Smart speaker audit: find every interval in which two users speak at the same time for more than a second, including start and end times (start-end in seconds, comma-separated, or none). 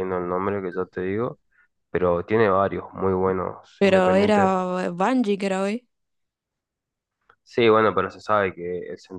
none